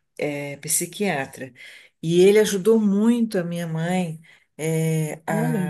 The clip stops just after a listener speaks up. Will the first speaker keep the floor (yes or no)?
yes